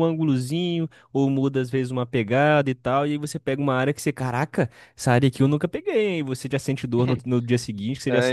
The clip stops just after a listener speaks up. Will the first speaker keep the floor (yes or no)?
no